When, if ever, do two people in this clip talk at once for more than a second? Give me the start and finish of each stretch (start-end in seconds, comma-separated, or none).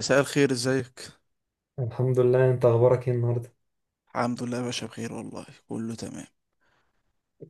none